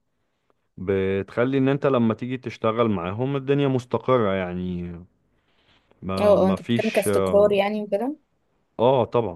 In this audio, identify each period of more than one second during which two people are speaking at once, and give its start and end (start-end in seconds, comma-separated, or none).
6.2-7.5